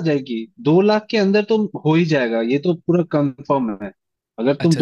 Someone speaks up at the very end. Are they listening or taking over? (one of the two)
listening